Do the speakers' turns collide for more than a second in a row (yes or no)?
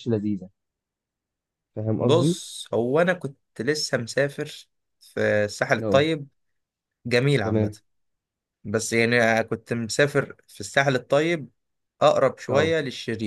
no